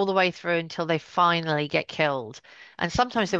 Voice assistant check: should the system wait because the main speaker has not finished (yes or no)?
yes